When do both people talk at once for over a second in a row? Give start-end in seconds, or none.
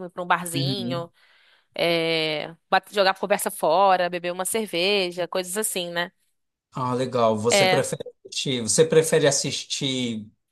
none